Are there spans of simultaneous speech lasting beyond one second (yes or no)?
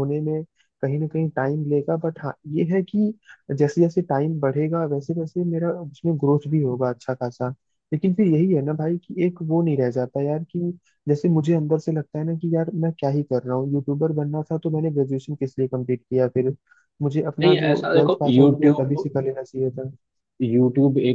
yes